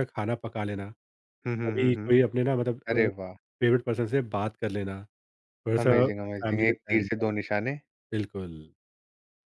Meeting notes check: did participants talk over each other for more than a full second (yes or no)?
yes